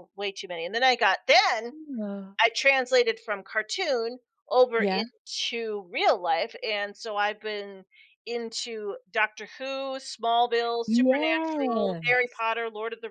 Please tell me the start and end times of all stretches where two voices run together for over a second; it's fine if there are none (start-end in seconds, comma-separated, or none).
10.9-12.2